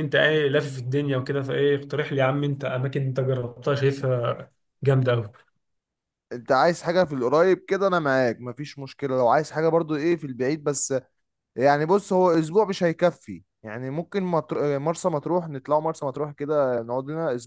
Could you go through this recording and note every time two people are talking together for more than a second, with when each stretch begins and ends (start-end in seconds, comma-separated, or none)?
none